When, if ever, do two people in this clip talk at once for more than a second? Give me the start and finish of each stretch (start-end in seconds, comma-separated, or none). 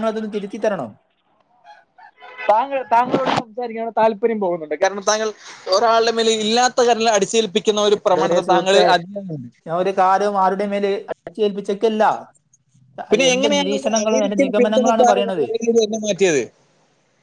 13.3-15.4